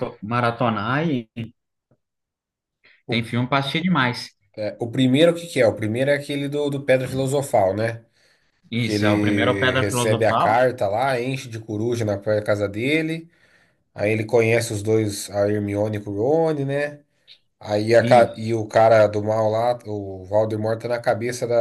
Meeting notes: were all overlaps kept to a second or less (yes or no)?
no